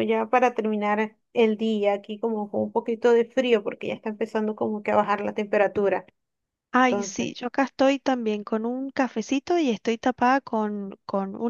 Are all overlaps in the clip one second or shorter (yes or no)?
yes